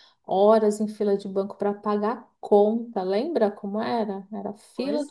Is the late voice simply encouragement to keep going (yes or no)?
yes